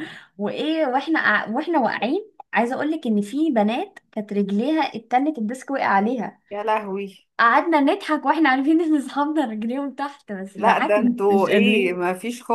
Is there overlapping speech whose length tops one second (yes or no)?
yes